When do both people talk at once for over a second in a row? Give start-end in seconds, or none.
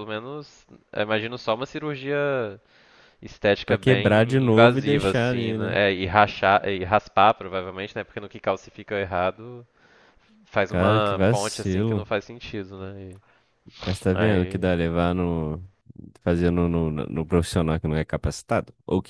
3.6-5.8, 10.7-12.1